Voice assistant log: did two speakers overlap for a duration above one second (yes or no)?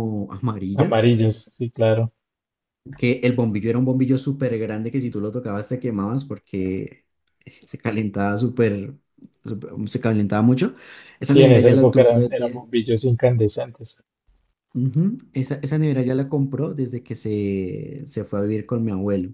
yes